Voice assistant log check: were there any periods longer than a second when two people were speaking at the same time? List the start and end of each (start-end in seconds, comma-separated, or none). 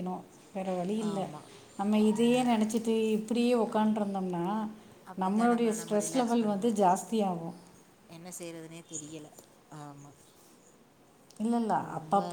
5.2-6.8